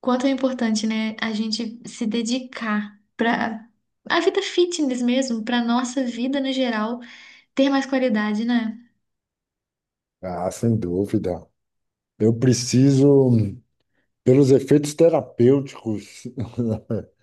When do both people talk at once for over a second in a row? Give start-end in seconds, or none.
none